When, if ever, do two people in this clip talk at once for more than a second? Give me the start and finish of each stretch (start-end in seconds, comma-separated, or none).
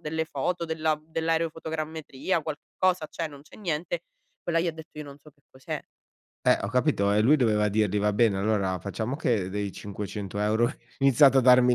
none